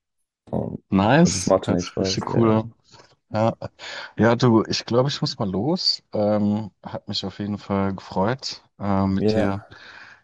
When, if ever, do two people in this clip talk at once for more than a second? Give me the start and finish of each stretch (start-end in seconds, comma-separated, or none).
1.2-2.6